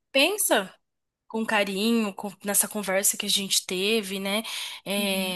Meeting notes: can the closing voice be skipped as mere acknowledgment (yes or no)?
yes